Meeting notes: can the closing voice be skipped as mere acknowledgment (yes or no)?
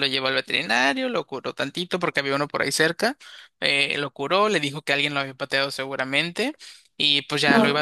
yes